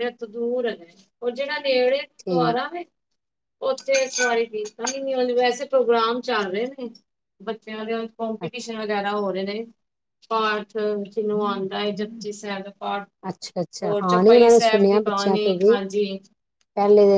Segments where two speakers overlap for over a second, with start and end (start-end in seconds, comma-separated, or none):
13.8-15.8